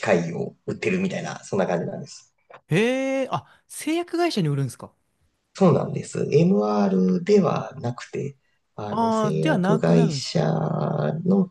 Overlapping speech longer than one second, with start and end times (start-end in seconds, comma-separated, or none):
8.9-10.3